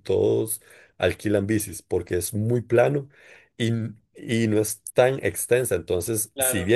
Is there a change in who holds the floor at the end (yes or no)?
no